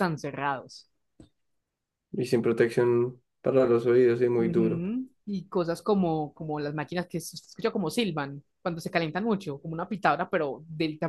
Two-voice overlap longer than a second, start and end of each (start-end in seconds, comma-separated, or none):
none